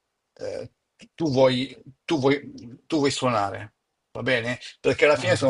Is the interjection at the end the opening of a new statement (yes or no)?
no